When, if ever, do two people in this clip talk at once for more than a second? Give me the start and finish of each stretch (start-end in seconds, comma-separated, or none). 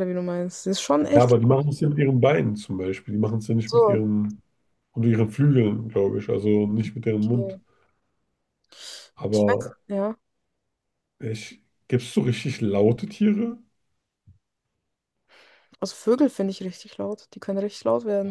none